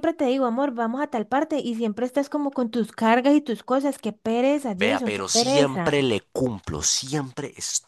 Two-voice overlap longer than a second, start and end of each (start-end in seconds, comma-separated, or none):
4.7-6.1